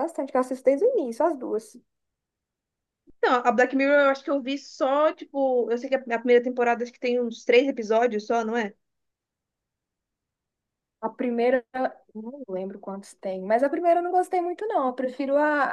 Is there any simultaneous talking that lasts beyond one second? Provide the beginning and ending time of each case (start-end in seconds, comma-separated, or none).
none